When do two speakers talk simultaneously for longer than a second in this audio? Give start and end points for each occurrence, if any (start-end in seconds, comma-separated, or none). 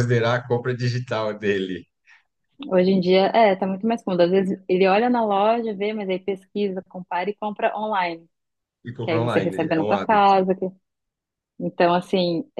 9.0-10.3